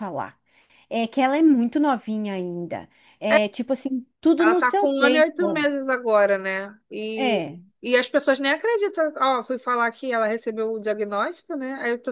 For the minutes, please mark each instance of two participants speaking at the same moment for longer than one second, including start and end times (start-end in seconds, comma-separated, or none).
4.4-5.7